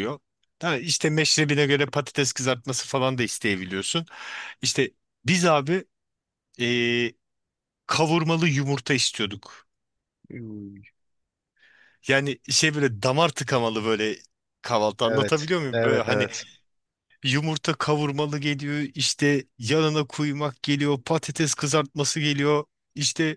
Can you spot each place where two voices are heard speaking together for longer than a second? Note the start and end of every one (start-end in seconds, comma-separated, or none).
15.0-16.3